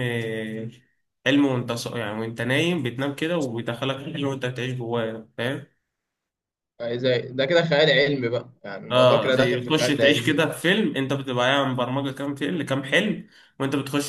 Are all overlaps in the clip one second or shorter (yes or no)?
no